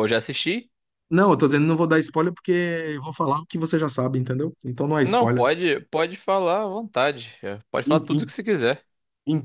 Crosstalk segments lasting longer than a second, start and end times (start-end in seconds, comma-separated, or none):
none